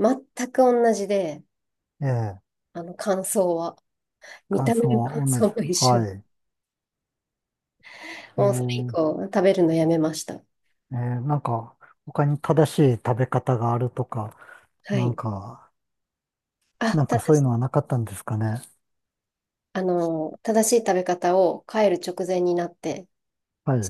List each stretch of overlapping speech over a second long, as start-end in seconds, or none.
4.5-6.1